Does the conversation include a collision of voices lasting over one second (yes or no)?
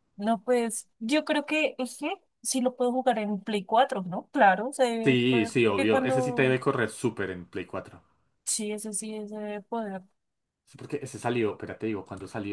yes